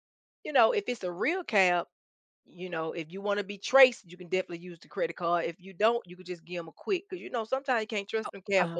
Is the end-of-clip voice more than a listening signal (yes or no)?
yes